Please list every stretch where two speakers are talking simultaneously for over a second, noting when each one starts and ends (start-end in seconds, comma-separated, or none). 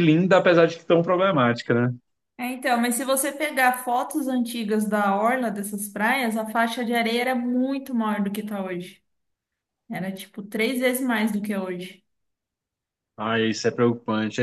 none